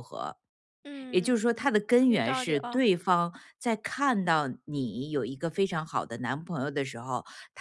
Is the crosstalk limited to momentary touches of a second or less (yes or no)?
no